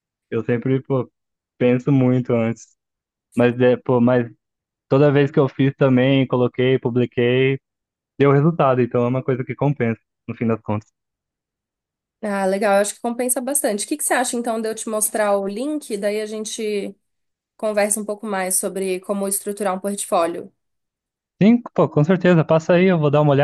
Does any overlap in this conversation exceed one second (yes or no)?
no